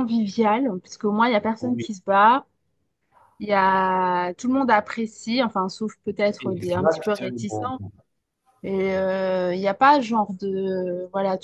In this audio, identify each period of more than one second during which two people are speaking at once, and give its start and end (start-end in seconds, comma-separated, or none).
6.4-7.7